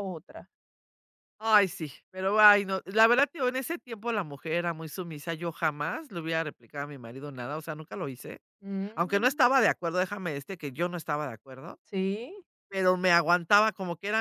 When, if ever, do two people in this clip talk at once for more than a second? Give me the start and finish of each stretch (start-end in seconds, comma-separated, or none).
none